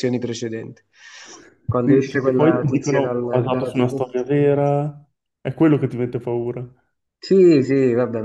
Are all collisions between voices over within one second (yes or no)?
no